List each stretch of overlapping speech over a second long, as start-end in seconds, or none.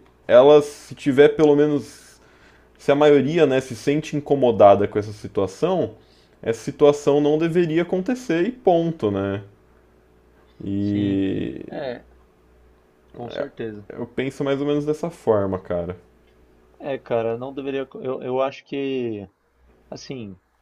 none